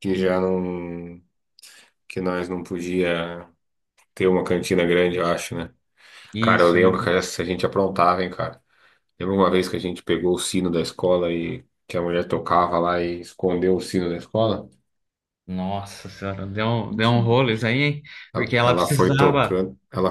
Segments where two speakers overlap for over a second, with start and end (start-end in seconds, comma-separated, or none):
18.3-19.6